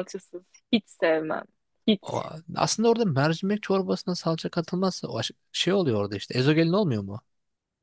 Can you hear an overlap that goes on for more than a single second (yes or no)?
no